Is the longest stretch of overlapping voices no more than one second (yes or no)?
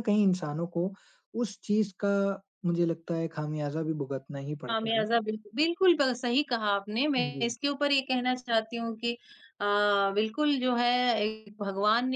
yes